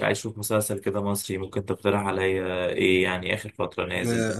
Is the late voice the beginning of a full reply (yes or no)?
yes